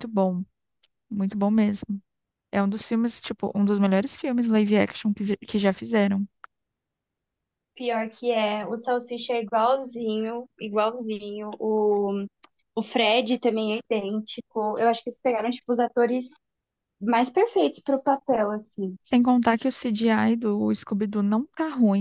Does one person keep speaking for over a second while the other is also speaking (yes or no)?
no